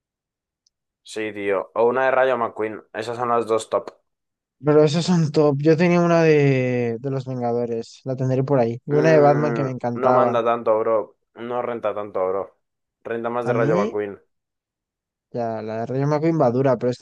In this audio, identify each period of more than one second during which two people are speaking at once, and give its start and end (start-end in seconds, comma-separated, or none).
8.9-10.4